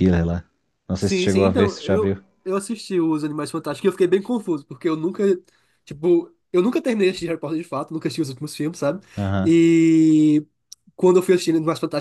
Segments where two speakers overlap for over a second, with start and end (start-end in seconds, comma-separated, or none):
1.0-2.2